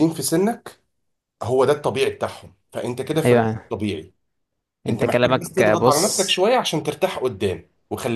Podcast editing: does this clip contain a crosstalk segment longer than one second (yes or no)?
yes